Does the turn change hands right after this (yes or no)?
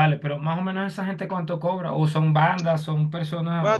yes